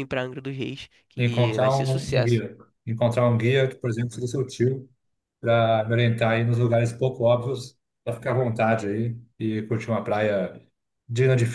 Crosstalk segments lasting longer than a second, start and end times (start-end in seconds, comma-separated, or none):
1.2-2.4